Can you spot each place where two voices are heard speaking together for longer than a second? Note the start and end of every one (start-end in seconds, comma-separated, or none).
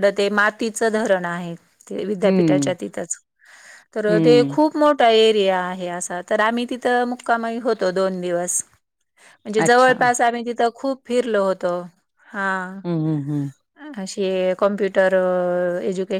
none